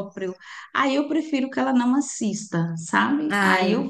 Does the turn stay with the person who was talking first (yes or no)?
yes